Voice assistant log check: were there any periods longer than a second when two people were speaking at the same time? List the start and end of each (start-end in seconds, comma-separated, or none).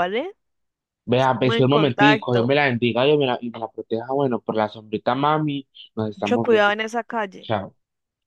1.2-2.5